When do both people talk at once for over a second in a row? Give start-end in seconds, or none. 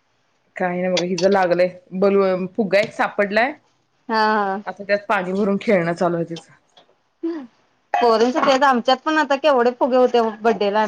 none